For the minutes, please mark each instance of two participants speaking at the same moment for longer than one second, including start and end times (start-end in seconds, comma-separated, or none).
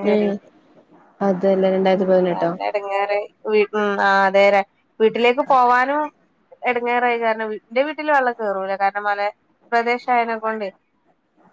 none